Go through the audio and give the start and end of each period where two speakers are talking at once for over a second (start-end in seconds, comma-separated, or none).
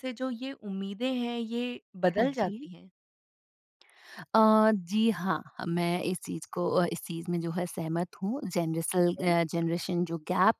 none